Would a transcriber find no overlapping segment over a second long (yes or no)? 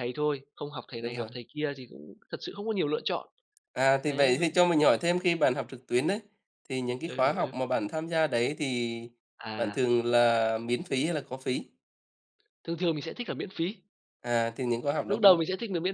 yes